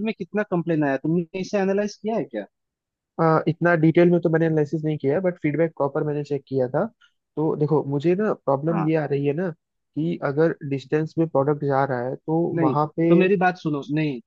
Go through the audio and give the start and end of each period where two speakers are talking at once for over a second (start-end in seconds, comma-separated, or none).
none